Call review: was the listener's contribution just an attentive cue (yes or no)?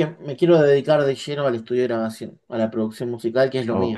no